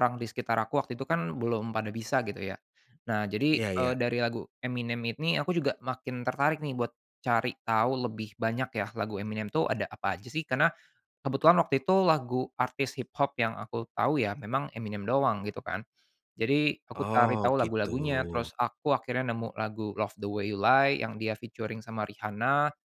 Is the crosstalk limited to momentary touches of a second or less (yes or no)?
no